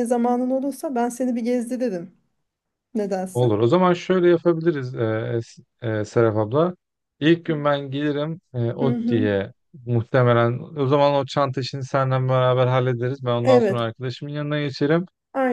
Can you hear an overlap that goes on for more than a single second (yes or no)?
no